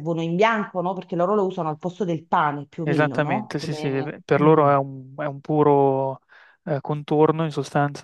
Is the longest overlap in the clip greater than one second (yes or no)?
yes